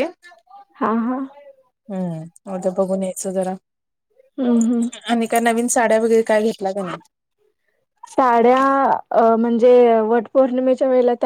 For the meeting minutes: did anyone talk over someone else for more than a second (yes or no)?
no